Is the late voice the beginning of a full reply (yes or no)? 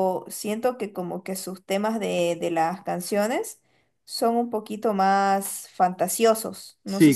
yes